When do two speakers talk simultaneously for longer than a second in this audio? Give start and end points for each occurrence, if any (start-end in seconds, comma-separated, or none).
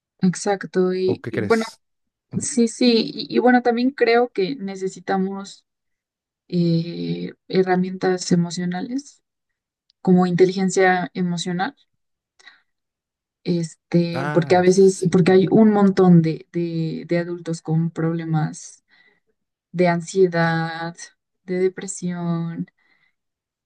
14.1-15.6